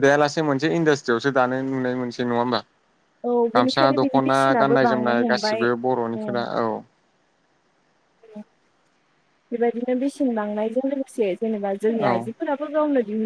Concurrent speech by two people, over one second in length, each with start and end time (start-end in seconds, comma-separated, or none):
3.6-5.7